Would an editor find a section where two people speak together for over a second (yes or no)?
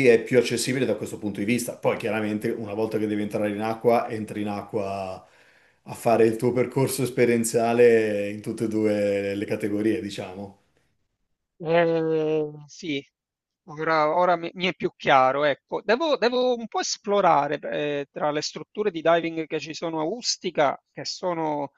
no